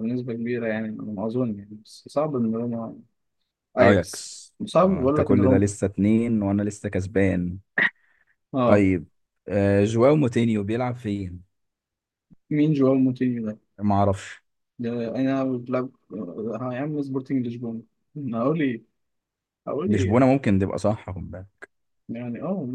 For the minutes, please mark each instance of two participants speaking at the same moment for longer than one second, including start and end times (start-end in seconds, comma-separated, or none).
3.8-5.6